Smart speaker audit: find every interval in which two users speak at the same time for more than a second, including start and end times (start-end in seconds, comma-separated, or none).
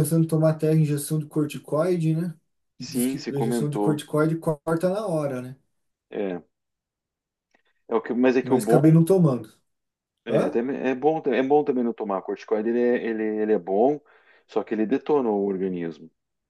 2.8-4.0